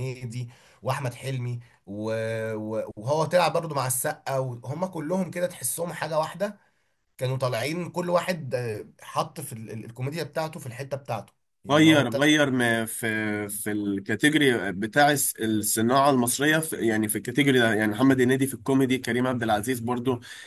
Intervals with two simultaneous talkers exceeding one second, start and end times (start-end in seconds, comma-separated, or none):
none